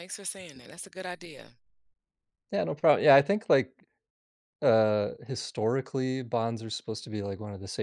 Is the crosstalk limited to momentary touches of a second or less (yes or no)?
yes